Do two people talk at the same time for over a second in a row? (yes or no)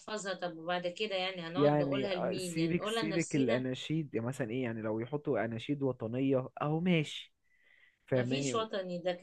yes